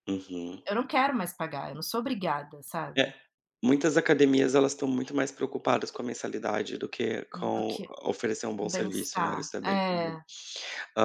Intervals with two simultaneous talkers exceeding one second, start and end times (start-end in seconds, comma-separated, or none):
8.6-10.2